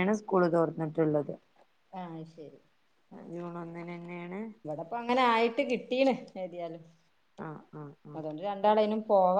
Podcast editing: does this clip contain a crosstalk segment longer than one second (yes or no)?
no